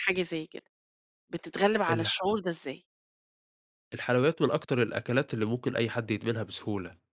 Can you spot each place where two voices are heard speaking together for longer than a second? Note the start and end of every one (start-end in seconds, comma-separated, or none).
none